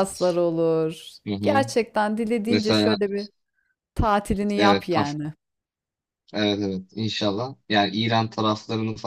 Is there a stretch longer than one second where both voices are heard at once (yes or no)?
no